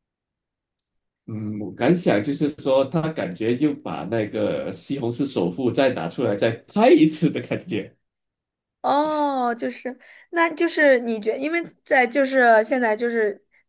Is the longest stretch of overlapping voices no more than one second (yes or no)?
yes